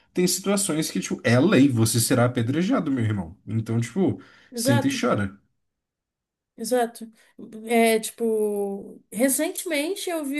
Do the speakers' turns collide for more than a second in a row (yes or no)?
no